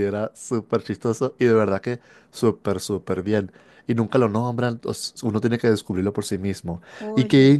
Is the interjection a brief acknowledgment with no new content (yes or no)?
yes